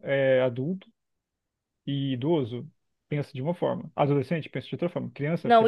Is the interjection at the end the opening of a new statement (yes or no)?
yes